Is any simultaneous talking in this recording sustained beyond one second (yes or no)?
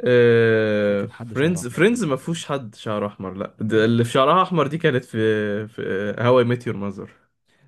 yes